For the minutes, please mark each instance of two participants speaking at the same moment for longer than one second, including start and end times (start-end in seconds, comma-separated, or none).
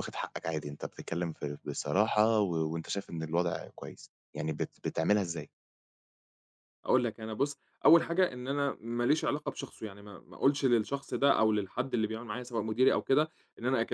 none